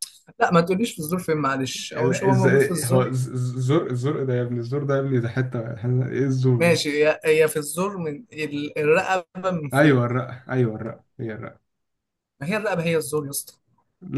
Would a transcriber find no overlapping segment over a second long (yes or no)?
no